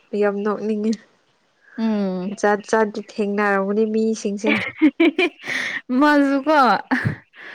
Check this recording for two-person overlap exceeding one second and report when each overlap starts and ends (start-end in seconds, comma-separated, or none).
none